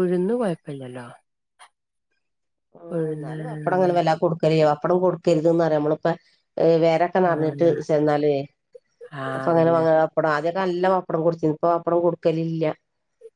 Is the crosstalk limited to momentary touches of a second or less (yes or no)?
yes